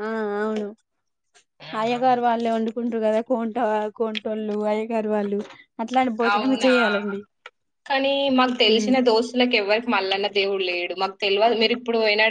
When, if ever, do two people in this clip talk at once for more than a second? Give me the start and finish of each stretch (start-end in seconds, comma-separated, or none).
none